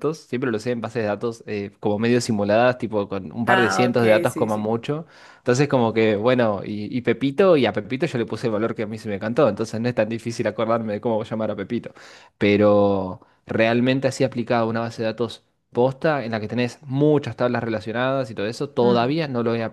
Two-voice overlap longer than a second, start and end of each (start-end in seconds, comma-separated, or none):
3.5-4.8